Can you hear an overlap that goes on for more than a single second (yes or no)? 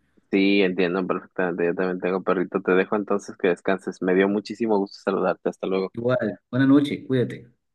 no